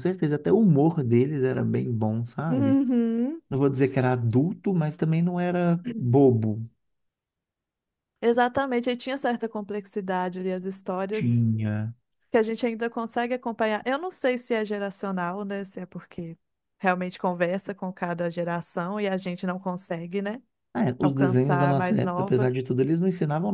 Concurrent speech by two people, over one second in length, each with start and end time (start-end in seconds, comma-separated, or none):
21.0-22.5